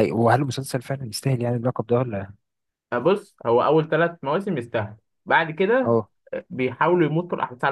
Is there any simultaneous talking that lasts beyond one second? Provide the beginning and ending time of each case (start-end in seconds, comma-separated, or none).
none